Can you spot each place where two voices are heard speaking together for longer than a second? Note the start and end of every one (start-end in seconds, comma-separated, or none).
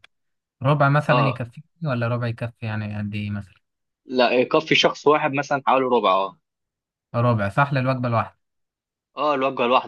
none